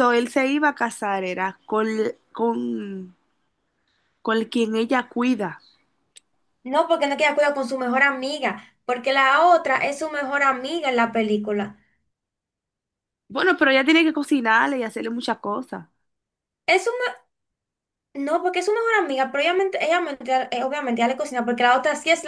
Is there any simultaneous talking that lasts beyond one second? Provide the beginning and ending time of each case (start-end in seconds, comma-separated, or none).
none